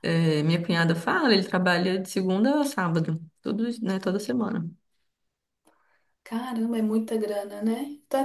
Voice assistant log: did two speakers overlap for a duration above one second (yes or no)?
no